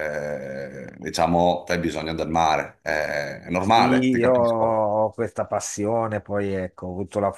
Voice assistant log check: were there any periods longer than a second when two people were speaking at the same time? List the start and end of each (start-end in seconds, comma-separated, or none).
3.6-4.8